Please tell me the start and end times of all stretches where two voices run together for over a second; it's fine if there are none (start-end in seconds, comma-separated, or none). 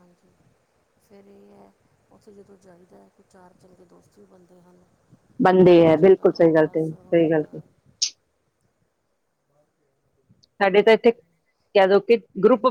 5.5-7.6